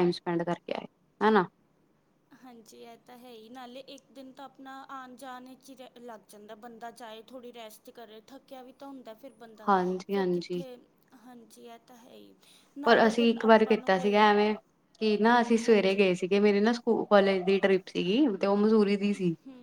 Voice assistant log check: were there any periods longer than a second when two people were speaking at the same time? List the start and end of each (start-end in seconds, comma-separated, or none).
12.8-14.2